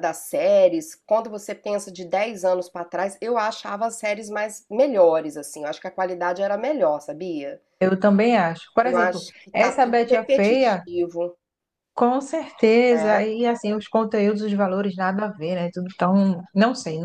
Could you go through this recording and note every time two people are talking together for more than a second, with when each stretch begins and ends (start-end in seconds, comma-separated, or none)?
8.8-10.8